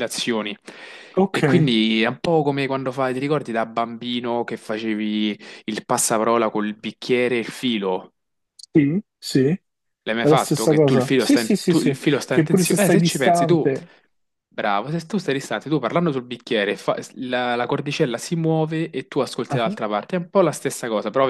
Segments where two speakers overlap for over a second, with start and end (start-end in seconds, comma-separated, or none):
10.2-13.7